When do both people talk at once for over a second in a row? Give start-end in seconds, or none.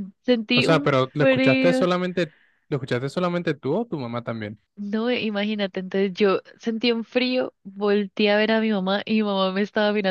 0.5-1.9